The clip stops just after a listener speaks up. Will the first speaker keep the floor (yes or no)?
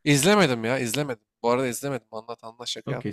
no